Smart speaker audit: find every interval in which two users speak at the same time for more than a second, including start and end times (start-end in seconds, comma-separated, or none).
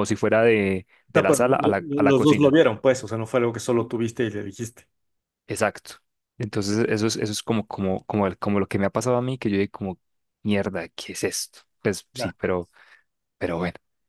1.1-2.6